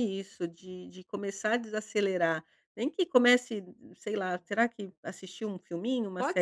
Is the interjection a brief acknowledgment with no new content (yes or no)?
no